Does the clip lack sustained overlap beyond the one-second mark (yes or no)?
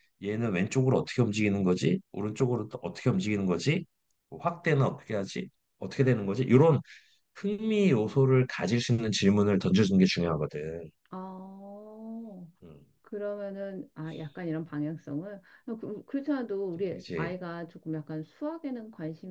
yes